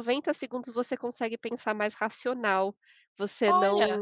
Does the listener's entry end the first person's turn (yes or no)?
no